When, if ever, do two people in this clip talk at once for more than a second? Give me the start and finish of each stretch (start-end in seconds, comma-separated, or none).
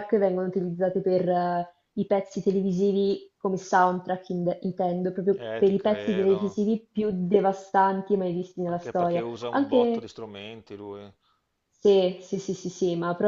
5.3-6.6, 8.7-10.1